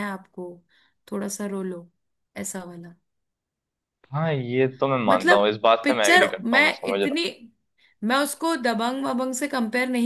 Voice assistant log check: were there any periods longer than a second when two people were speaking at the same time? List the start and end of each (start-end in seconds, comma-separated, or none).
5.1-7.2